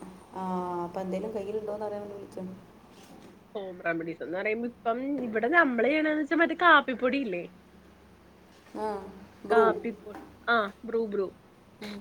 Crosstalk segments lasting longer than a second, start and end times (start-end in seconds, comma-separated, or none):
none